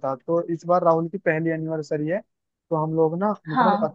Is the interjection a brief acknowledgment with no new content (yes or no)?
no